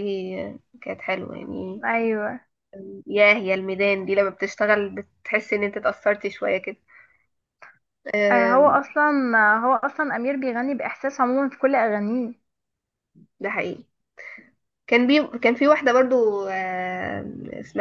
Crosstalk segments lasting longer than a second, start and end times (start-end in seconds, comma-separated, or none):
none